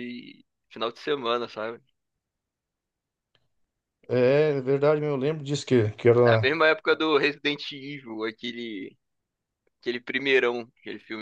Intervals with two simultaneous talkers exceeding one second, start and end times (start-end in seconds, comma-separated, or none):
none